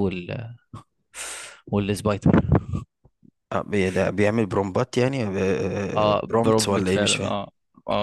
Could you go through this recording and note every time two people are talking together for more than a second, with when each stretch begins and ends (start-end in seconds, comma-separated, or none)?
6.0-7.3